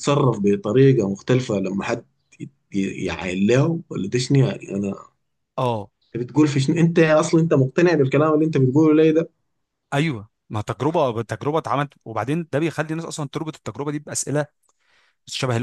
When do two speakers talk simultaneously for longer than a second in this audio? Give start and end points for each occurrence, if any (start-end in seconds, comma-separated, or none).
none